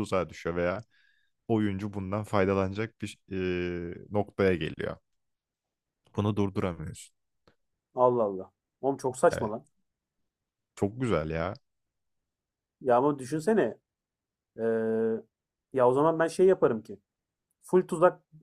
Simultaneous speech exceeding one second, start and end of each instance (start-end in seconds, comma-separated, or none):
none